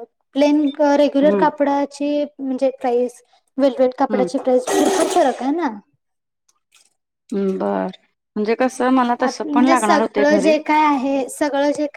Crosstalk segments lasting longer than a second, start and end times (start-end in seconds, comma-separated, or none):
9.1-10.5